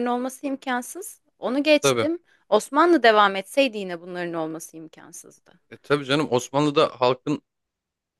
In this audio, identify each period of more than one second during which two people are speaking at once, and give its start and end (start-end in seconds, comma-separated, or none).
none